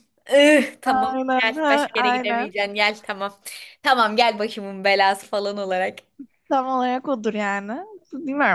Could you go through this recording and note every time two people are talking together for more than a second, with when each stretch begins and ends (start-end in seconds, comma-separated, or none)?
0.8-2.6